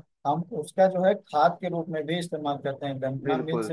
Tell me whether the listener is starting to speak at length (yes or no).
no